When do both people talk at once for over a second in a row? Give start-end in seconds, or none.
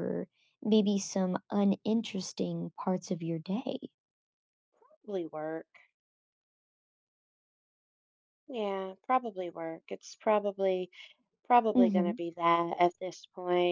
none